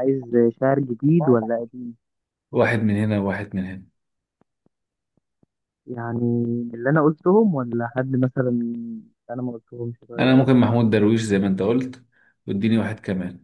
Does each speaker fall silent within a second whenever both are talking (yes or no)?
yes